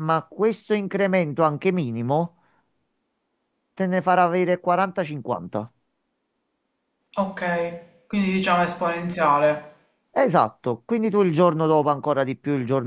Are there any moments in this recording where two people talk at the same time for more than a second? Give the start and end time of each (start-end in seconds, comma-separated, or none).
none